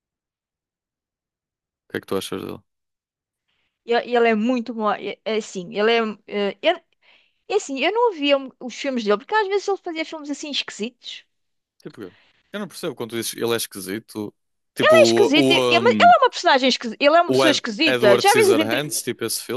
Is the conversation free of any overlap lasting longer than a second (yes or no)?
no